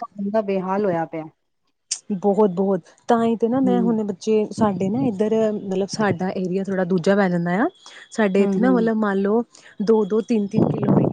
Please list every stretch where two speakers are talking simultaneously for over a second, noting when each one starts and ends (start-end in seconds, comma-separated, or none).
none